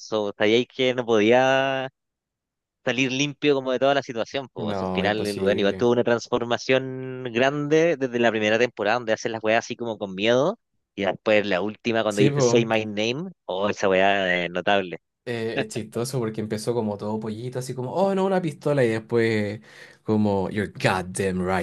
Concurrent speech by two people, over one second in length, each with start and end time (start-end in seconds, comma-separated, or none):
4.6-5.9